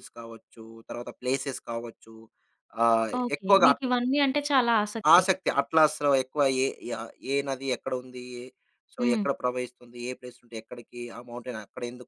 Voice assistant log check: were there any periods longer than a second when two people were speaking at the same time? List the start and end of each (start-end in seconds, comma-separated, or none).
none